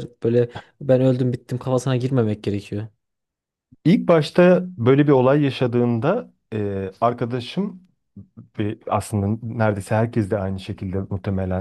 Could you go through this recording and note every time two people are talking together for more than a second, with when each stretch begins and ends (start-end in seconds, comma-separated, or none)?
none